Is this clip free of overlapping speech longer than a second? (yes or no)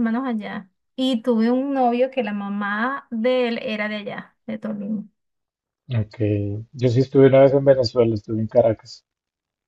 yes